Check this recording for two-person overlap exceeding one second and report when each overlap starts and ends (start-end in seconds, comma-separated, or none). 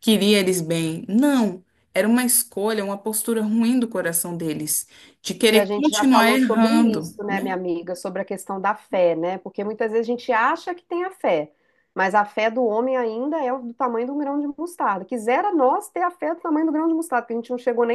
5.4-7.5